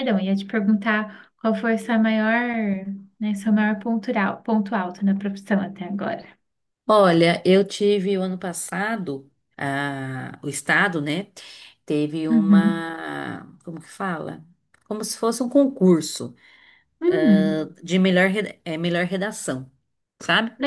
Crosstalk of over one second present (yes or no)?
no